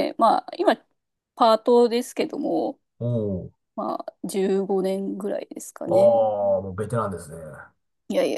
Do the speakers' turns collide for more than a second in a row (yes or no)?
no